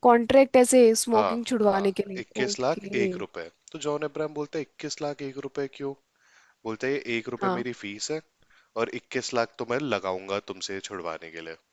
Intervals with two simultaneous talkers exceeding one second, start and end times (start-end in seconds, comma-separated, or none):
1.1-3.1